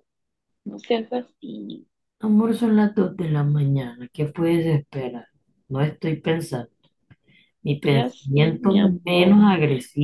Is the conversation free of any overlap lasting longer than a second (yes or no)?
no